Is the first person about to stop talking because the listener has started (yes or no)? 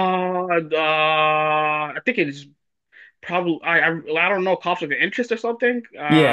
yes